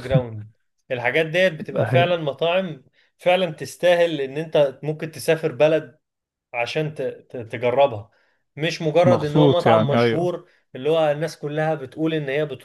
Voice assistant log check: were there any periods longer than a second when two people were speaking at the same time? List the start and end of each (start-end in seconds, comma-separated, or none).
9.0-10.3